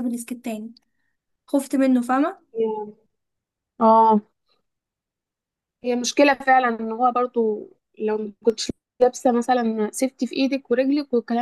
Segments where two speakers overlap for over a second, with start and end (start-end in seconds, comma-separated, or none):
none